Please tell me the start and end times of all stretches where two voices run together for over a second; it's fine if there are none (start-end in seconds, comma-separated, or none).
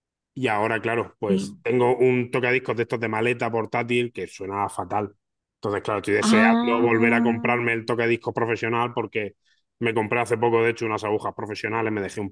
6.2-7.6